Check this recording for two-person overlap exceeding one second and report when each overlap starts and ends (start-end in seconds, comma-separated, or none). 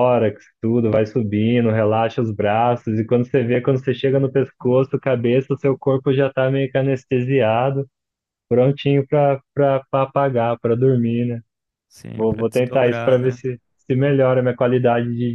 12.2-13.4